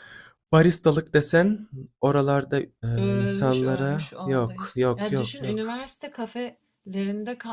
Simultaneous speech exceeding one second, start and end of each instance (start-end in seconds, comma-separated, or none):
3.0-5.8